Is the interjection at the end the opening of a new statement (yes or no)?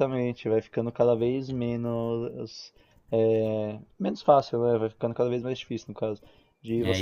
yes